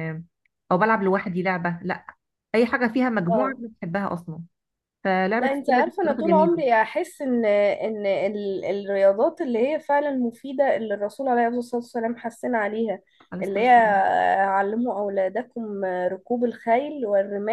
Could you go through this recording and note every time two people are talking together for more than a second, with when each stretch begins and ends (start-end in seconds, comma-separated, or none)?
5.4-6.6